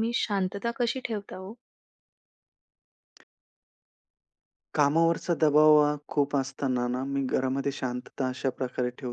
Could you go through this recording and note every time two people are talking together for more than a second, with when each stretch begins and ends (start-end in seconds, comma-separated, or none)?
none